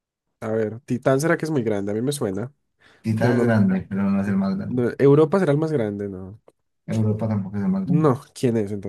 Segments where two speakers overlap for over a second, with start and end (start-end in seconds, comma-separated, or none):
none